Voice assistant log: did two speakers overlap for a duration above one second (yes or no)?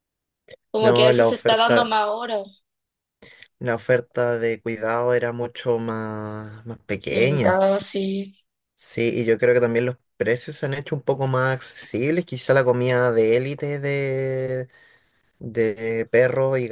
yes